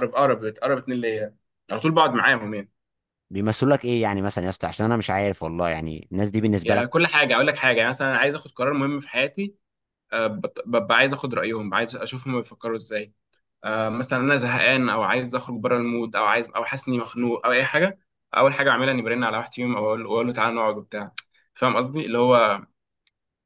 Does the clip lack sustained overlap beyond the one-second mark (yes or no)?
yes